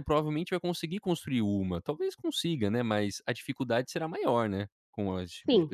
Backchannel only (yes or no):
no